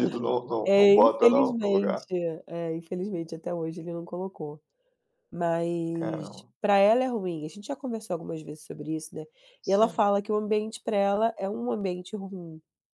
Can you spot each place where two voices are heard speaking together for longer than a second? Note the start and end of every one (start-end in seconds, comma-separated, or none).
0.7-2.0